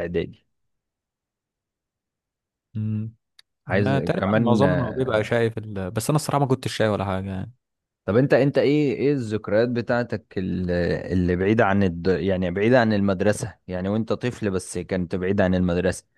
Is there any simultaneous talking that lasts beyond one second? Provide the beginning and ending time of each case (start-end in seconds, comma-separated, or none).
3.7-5.3